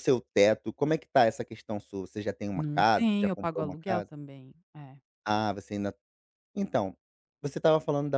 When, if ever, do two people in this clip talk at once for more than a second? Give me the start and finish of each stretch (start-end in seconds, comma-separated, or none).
2.5-4.1